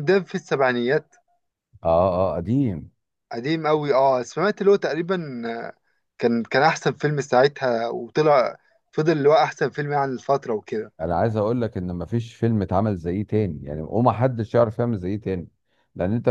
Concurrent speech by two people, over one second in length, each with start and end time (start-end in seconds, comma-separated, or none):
none